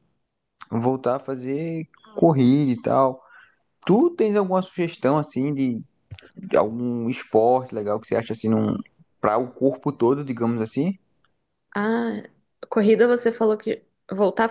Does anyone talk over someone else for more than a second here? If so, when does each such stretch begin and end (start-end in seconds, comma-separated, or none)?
none